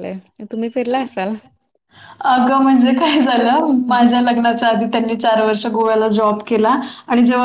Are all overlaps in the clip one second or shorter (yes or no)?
yes